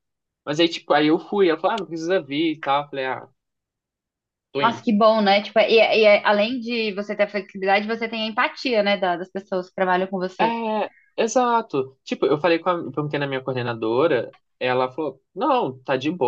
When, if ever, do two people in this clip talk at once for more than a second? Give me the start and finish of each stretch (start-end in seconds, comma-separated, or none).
none